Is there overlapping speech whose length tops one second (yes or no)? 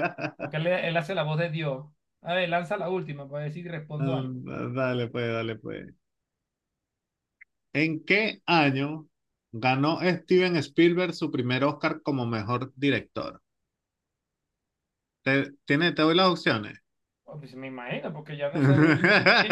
no